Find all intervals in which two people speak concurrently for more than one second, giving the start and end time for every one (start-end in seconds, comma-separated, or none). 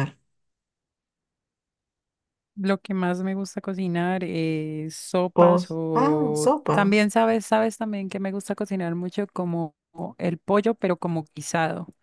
5.3-7.1